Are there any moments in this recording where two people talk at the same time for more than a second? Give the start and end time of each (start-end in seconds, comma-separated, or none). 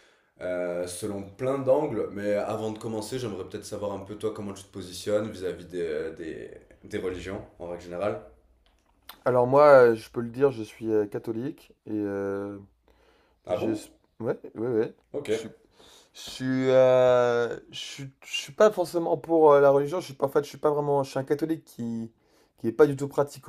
none